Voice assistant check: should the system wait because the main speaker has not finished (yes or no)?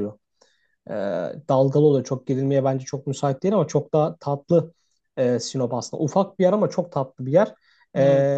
yes